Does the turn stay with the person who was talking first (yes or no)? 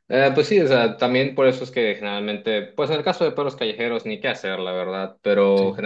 yes